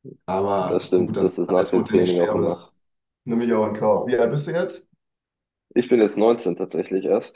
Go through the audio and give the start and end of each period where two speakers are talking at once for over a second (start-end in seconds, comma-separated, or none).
0.7-2.7